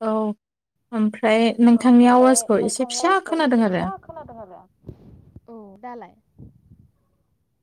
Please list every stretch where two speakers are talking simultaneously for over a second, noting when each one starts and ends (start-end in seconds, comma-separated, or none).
1.7-3.8